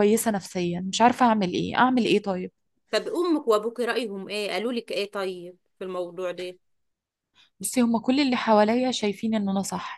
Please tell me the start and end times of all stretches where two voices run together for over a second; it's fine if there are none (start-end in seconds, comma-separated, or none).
none